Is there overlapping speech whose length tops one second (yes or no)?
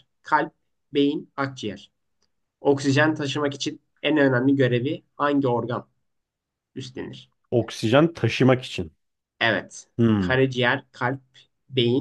no